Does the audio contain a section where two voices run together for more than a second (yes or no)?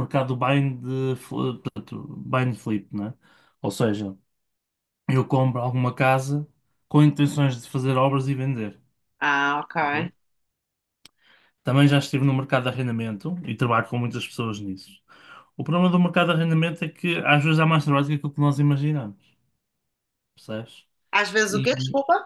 no